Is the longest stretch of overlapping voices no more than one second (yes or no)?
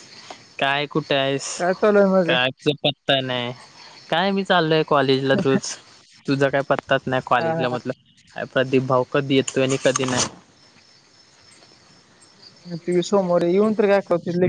yes